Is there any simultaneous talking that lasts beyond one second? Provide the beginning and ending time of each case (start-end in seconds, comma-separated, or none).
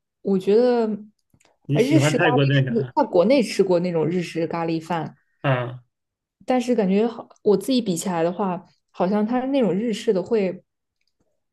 1.7-2.9